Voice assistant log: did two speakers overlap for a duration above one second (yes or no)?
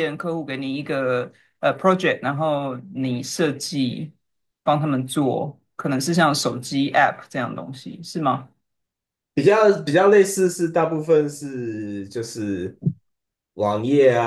no